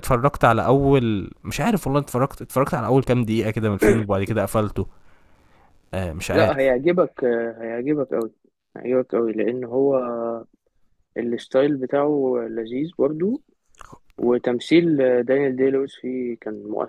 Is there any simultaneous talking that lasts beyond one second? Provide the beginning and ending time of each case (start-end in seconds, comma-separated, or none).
none